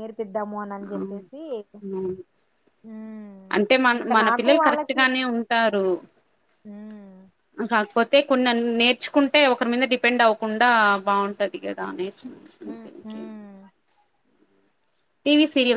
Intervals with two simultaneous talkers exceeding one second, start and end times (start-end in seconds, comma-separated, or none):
none